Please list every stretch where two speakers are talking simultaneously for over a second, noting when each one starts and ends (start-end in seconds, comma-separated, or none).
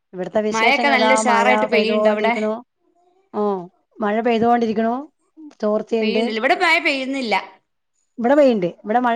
0.5-2.3